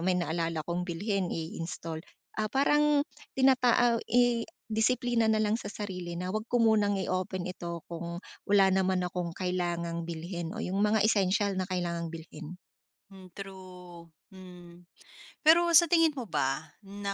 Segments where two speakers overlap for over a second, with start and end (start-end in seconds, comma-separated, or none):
none